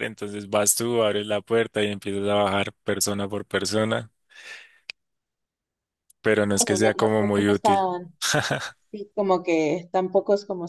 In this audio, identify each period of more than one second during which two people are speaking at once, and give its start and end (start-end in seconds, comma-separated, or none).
6.5-7.9